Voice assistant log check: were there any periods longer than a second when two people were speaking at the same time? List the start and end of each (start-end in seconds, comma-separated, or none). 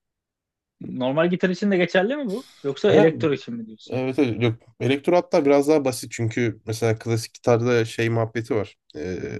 none